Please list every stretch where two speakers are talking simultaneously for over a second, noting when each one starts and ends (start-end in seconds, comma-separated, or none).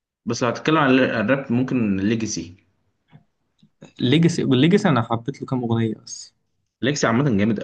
none